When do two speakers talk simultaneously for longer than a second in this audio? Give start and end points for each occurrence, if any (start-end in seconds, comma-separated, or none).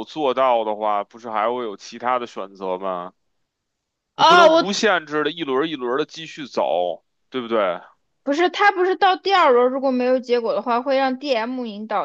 none